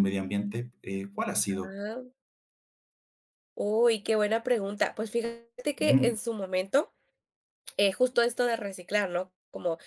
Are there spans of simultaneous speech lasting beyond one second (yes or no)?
no